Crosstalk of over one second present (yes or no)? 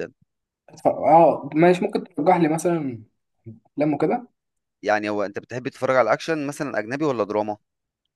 no